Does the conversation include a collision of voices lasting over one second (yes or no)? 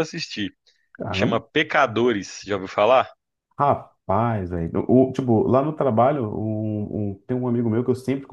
no